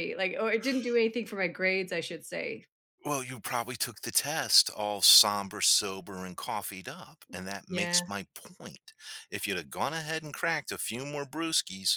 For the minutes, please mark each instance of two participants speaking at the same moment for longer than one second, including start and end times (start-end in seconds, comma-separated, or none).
none